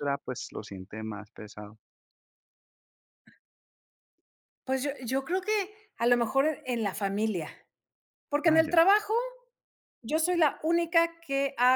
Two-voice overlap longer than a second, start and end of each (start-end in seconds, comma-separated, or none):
none